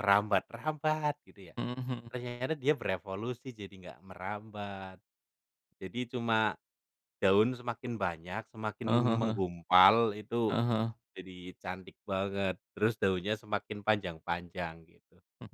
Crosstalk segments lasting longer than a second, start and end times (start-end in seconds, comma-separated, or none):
none